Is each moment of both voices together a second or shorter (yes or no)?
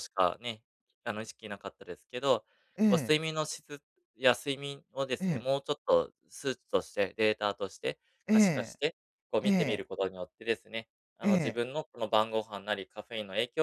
yes